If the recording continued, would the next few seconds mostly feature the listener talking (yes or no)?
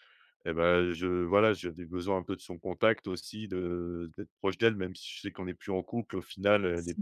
no